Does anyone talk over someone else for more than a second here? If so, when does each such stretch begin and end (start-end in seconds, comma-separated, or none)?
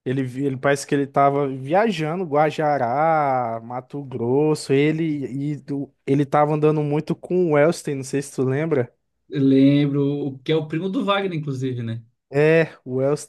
none